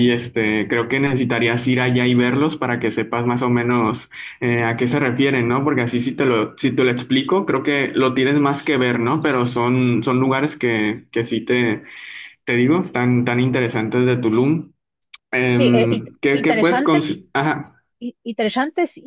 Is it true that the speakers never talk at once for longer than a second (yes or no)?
no